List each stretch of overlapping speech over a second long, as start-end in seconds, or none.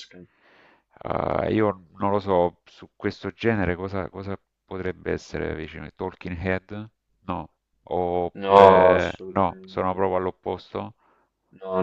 8.3-10.1